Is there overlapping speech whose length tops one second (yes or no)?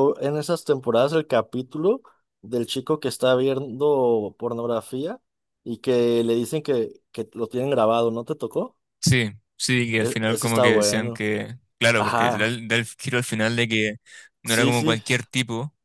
yes